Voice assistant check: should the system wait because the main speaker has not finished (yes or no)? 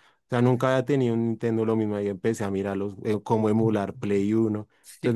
no